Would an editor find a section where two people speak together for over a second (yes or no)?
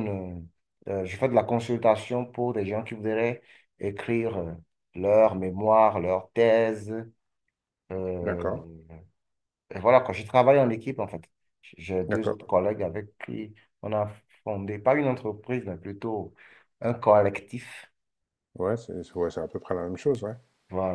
no